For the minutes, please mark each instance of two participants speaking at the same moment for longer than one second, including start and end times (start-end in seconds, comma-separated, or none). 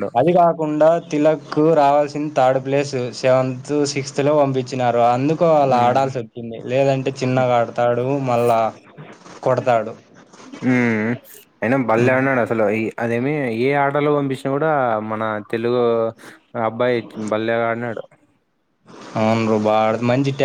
none